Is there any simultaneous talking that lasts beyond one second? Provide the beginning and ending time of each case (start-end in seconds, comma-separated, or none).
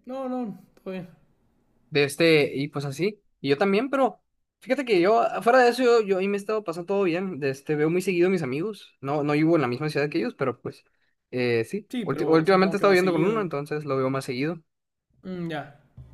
11.9-13.5